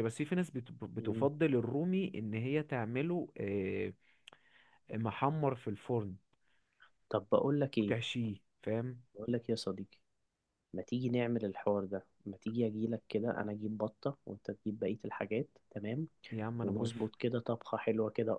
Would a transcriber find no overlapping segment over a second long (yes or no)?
yes